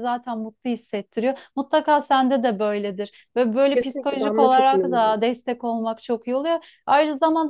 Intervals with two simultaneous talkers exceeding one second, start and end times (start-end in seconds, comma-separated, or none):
3.7-5.3